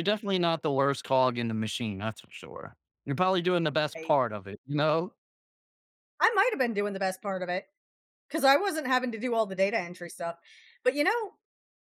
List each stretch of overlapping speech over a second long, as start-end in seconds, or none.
none